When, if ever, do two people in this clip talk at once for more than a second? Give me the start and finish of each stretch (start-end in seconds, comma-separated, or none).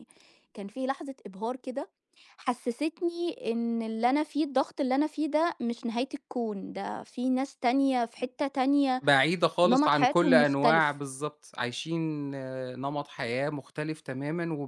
9.6-11.0